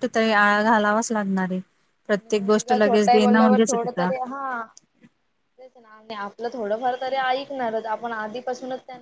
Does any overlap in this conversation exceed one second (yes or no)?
yes